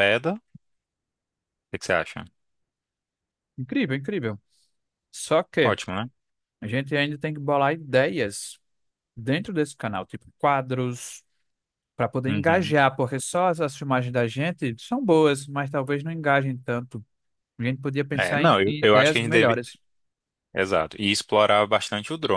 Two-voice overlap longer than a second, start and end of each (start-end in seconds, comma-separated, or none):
18.2-19.6